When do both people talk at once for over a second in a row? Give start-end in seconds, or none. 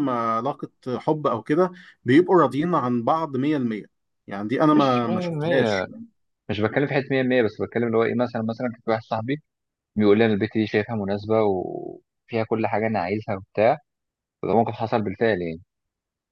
4.7-5.9